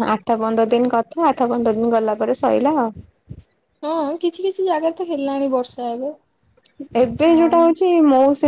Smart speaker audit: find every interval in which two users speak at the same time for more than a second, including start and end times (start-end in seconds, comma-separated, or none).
none